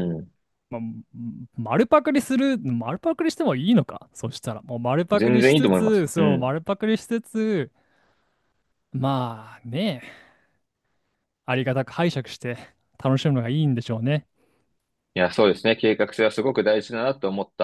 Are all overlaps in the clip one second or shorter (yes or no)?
no